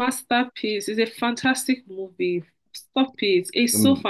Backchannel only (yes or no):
yes